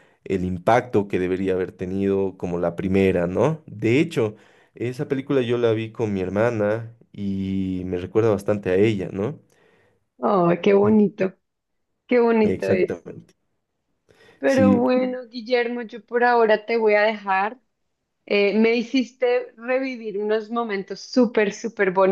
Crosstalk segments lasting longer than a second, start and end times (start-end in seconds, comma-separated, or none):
none